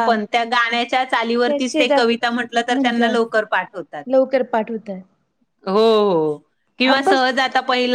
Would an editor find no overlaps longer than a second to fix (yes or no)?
yes